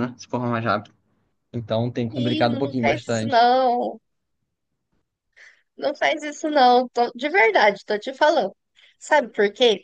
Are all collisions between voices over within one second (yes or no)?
no